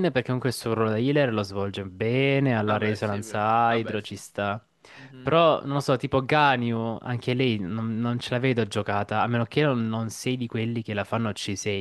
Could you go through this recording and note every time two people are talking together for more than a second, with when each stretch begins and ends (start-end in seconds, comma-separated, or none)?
2.6-4.2